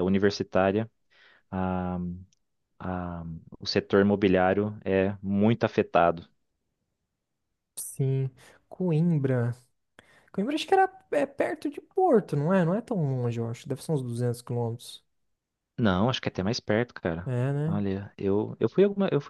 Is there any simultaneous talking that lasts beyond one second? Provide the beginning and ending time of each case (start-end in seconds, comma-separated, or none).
none